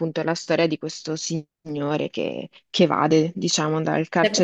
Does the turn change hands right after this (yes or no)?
yes